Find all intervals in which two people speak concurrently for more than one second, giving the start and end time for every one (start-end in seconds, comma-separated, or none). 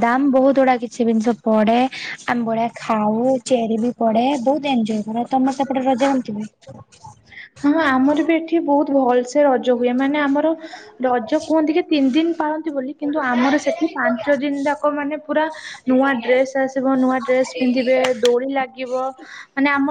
none